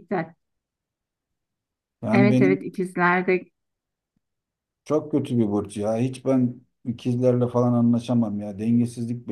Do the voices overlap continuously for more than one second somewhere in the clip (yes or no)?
no